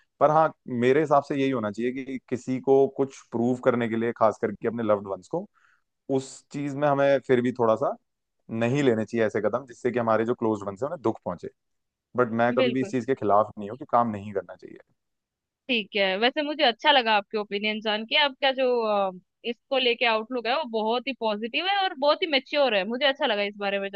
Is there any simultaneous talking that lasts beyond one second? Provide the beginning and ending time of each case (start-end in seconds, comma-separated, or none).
none